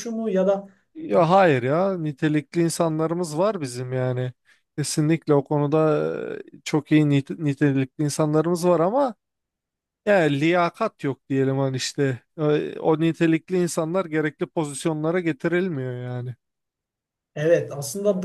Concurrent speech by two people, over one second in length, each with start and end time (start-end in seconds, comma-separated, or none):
none